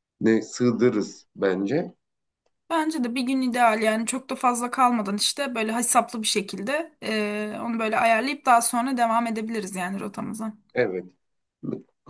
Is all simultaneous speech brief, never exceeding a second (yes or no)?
yes